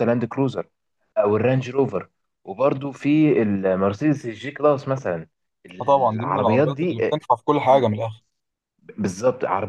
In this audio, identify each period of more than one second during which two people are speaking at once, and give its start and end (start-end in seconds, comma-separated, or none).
5.8-7.2